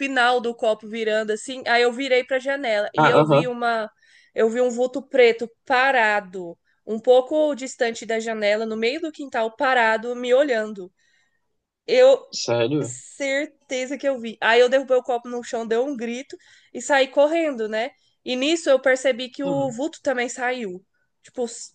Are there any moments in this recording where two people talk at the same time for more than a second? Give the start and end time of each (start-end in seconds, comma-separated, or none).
none